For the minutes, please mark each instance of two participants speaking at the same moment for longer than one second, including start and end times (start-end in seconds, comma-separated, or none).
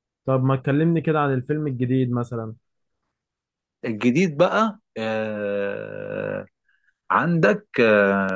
none